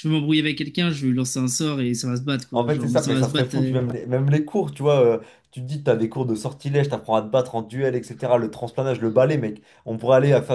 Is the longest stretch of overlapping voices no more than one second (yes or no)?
no